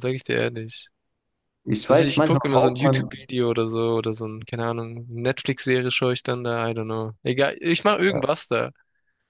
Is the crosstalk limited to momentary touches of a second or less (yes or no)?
no